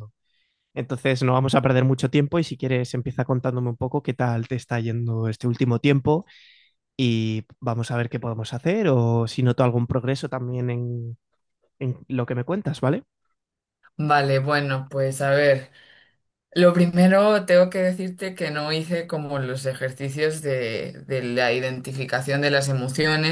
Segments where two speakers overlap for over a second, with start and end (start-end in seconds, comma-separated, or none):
none